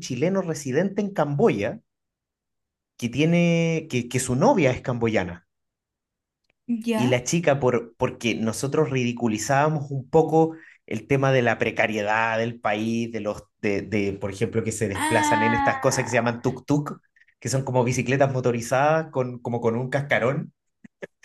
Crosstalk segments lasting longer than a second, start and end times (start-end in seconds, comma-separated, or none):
14.9-16.4